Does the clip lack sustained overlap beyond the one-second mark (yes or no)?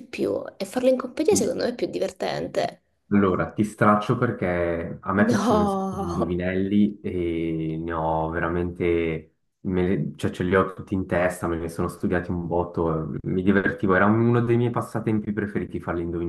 no